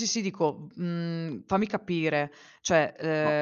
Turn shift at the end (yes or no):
yes